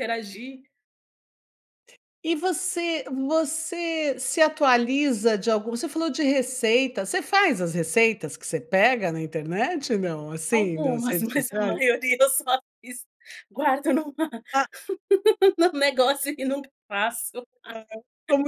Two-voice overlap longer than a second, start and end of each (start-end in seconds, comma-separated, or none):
10.5-11.8